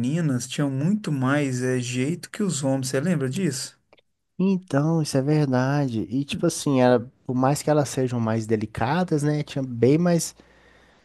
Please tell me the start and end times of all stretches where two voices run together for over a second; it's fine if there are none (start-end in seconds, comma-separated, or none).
none